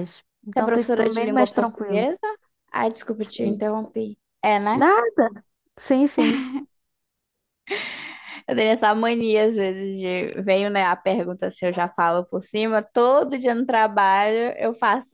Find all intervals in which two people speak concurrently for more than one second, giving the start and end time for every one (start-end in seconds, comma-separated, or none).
0.6-2.1